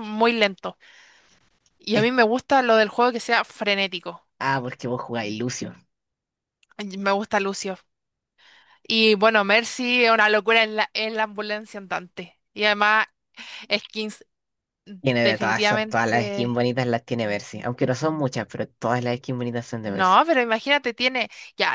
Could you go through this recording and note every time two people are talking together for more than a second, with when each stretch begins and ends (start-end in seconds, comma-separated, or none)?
15.2-16.6